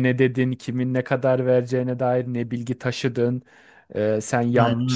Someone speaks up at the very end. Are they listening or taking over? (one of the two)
listening